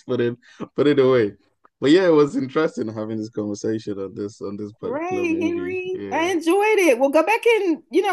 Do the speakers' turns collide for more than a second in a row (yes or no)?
yes